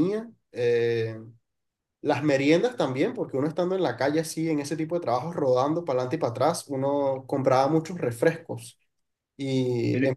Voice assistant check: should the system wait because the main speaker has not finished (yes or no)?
yes